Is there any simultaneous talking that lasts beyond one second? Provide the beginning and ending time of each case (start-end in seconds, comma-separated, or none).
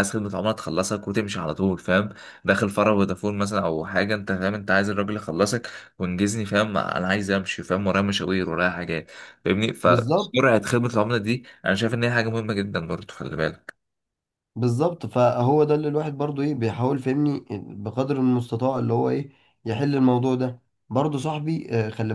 none